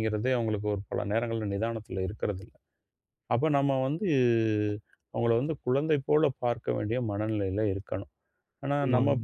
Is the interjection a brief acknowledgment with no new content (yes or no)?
yes